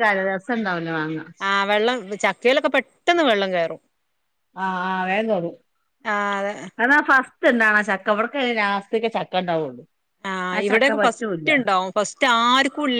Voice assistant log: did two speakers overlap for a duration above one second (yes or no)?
no